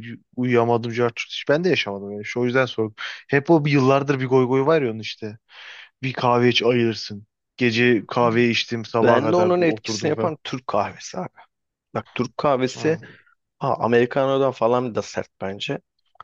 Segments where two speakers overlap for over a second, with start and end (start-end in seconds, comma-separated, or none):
9.0-10.3